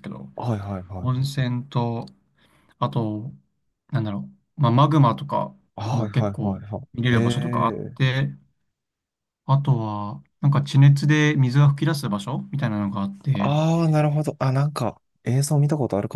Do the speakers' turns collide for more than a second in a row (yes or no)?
yes